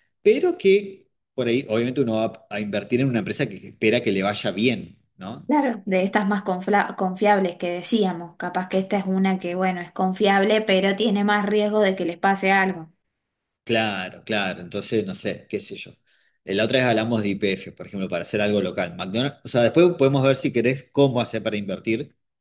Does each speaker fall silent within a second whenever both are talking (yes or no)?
yes